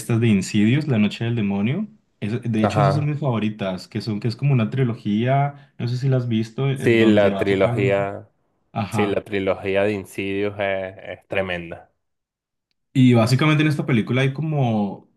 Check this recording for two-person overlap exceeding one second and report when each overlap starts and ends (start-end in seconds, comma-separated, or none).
6.7-8.0